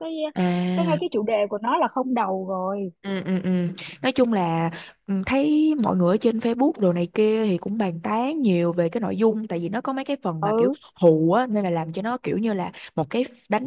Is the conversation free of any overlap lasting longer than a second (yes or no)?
yes